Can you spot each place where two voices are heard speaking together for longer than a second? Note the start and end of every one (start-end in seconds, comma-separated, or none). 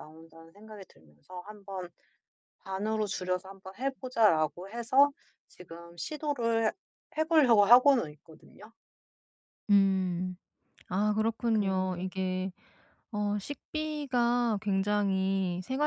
none